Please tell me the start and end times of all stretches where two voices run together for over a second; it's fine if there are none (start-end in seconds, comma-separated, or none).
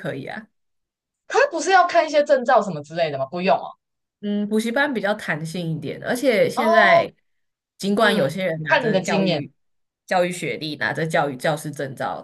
8.0-9.5